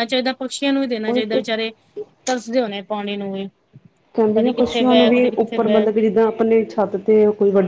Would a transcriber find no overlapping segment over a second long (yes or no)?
no